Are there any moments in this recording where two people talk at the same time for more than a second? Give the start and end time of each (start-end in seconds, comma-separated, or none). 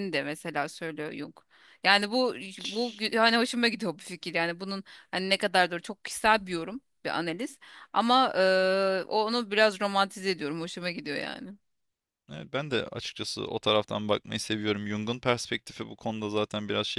none